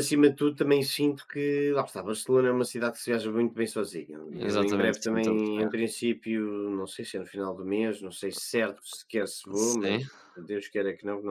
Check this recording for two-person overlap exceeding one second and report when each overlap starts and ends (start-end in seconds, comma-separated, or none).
4.4-5.8